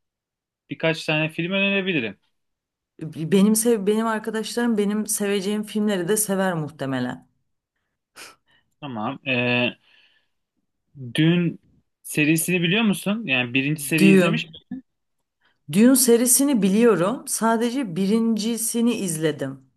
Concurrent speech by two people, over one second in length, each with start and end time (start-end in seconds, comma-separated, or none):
none